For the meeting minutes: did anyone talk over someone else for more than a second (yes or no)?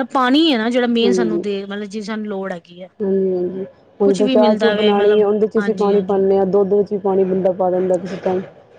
yes